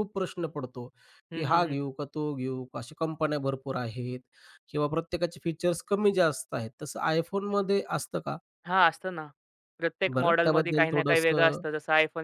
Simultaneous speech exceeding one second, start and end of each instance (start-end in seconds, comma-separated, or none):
10.1-11.6